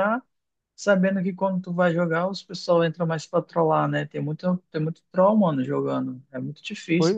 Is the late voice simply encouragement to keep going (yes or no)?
no